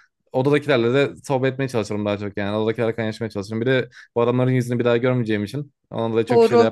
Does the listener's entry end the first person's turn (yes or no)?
yes